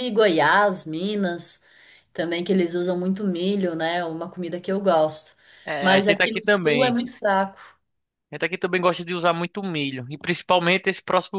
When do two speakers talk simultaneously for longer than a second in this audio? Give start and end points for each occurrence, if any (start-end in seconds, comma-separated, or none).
5.8-7.0